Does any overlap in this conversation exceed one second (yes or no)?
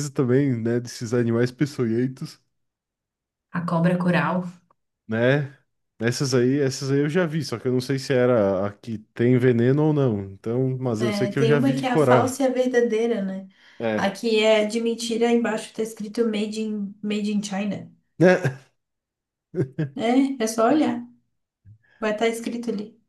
yes